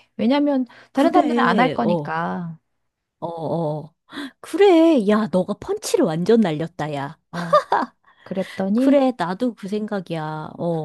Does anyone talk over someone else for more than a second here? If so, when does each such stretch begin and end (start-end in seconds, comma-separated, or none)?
0.9-2.1